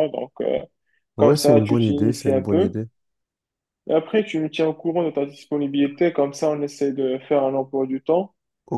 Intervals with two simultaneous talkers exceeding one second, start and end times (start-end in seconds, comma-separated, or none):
1.2-2.7